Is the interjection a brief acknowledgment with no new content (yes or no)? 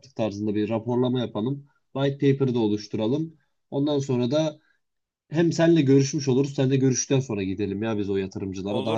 no